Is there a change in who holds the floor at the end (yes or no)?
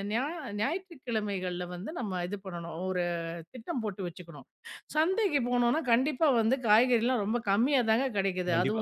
yes